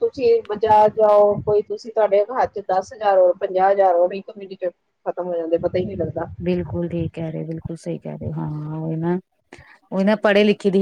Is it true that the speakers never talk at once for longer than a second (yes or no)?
yes